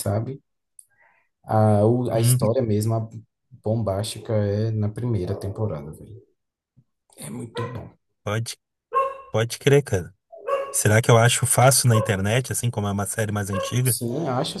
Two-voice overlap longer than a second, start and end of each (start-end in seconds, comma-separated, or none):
none